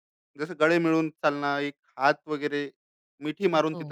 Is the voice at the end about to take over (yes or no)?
no